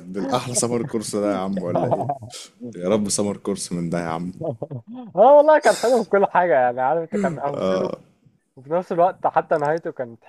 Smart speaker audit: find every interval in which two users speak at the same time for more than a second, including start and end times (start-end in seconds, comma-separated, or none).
none